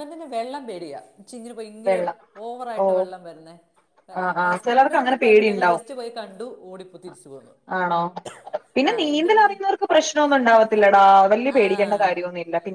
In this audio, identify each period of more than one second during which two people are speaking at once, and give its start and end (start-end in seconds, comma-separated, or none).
4.4-5.8